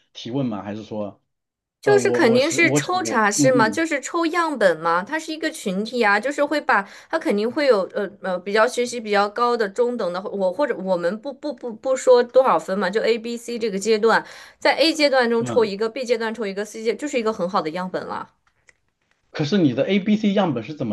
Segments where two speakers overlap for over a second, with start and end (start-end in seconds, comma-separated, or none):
1.8-3.8